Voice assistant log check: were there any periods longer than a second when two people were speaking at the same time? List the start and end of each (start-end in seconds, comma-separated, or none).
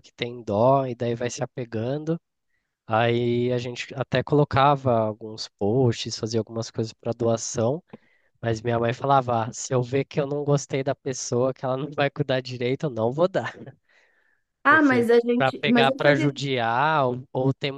14.7-16.3